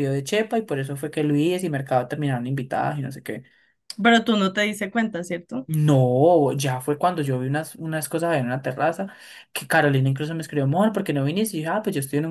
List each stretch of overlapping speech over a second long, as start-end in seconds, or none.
none